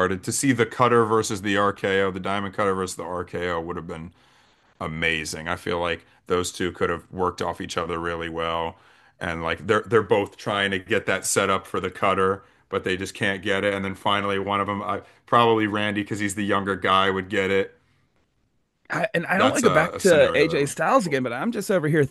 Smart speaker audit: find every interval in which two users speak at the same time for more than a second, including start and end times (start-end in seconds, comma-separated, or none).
19.4-21.2